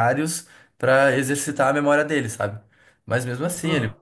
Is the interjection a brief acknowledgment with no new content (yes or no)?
yes